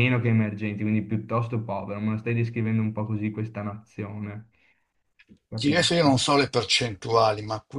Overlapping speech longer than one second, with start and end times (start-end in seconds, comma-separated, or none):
none